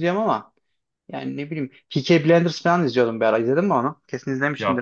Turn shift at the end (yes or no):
yes